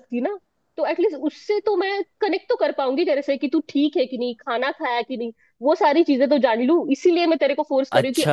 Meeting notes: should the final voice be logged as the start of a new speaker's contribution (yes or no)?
yes